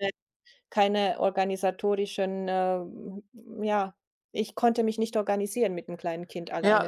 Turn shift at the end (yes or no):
yes